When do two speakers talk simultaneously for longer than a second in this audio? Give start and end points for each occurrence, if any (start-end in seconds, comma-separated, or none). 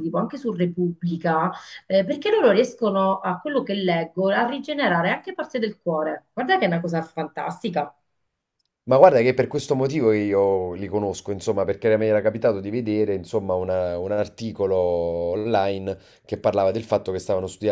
none